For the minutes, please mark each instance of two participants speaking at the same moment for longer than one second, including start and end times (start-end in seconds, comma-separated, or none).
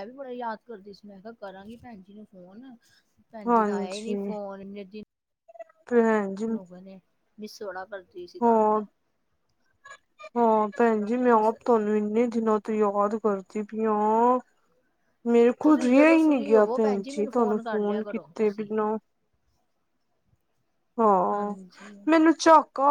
15.6-18.7